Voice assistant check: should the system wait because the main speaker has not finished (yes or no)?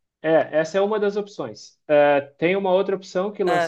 yes